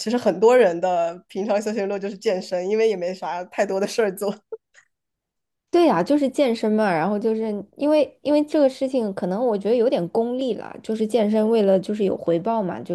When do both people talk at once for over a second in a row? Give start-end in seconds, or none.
none